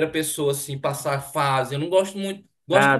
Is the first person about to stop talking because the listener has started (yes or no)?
no